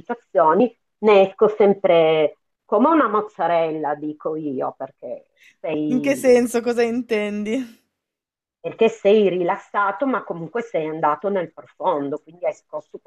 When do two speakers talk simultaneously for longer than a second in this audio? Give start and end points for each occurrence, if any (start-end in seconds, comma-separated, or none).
none